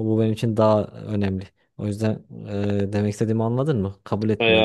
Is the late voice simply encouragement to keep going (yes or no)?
no